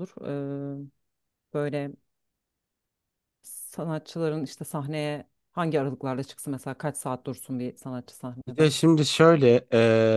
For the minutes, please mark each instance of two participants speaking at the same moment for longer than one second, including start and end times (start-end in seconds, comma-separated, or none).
none